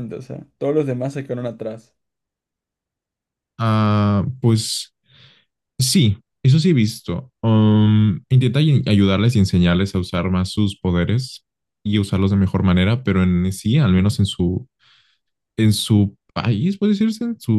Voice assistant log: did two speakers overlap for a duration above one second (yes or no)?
no